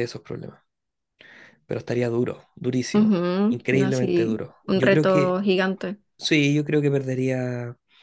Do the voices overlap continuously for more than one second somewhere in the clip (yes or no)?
yes